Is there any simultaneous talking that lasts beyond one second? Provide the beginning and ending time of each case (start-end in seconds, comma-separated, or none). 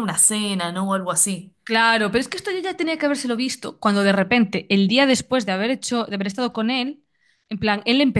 none